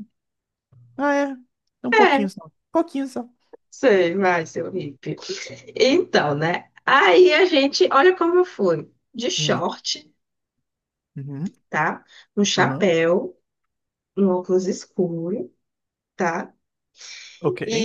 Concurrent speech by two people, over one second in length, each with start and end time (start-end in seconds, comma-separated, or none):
none